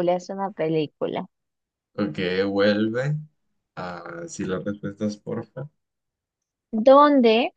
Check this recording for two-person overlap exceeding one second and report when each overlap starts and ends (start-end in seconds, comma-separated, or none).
none